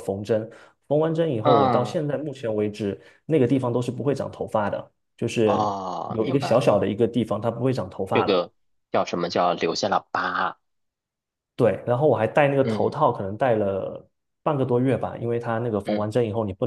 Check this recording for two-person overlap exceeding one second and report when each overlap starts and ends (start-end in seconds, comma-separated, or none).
5.4-6.8